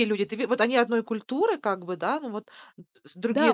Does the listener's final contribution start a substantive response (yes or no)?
yes